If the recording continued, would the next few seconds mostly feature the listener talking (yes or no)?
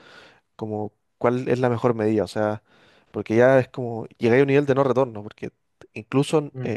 no